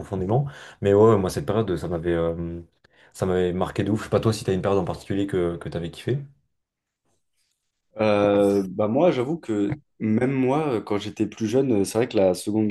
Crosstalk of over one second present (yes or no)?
no